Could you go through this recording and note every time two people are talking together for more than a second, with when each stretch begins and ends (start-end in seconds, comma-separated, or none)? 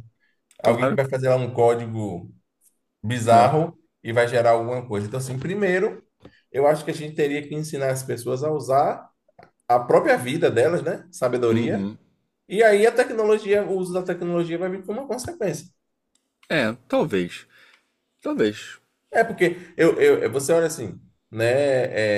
none